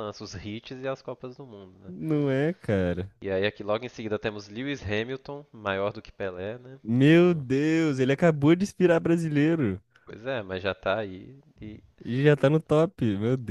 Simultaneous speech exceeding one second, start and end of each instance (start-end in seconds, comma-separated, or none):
none